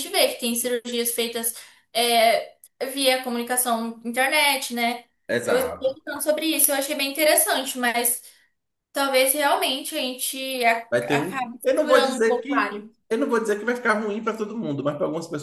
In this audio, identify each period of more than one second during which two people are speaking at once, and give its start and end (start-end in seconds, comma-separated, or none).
10.9-12.9